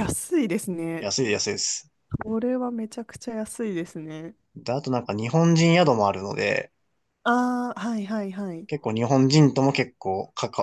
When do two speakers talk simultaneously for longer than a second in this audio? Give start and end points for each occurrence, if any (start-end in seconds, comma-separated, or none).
none